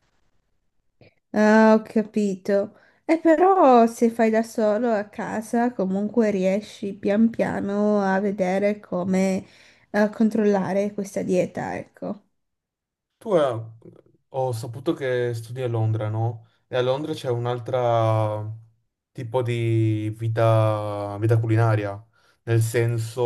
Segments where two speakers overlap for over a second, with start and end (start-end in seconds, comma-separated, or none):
none